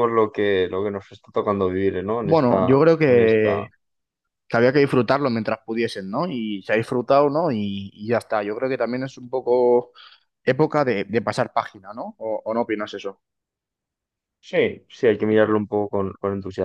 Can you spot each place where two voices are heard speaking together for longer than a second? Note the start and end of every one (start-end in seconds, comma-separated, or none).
2.2-3.7